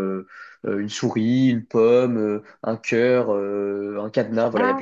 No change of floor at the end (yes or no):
no